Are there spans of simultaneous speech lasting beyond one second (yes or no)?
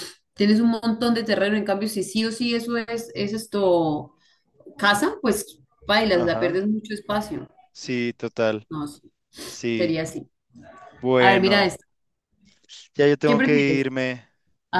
no